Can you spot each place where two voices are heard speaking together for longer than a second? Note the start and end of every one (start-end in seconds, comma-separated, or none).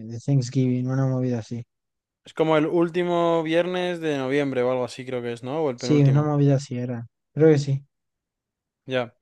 none